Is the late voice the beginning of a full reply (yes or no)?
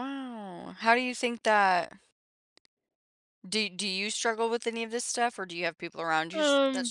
no